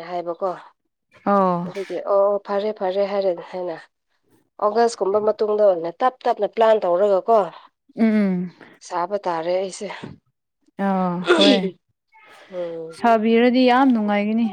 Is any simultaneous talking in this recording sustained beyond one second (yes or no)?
no